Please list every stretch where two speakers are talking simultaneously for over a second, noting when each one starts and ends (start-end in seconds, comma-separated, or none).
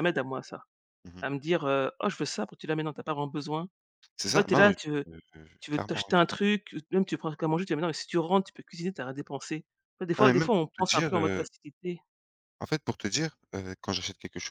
10.2-11.5